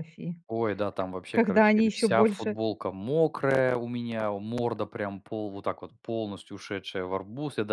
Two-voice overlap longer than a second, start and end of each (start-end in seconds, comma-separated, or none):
1.0-2.6